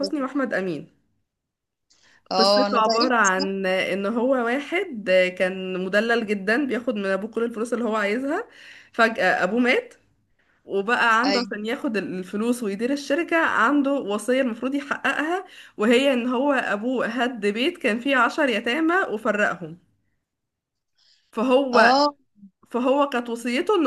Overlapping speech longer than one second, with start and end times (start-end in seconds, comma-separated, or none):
2.4-3.7